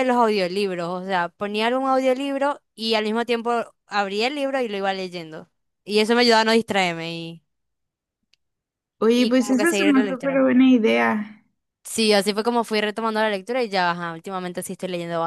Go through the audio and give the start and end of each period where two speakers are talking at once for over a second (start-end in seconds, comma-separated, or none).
9.1-10.4